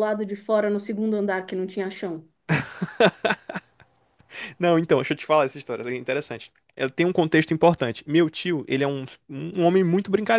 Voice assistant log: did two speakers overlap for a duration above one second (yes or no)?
no